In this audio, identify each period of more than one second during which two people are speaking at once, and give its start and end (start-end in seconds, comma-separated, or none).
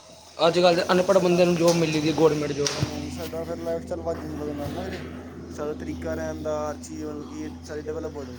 none